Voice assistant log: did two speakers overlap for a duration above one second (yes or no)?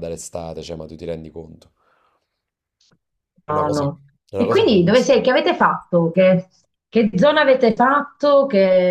yes